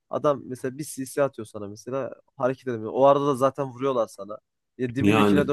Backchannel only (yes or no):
yes